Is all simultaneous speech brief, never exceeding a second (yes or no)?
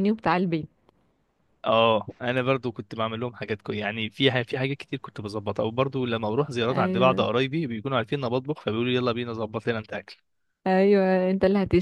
yes